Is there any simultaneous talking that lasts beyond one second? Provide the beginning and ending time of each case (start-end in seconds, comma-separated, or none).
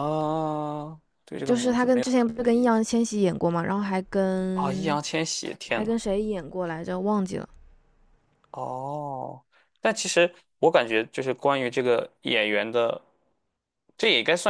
1.4-2.8